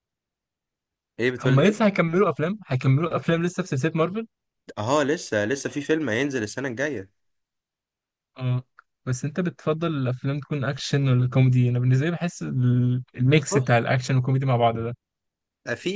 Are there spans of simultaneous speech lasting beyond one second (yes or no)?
no